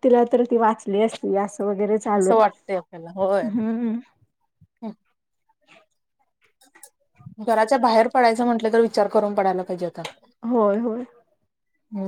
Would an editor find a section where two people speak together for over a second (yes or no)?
yes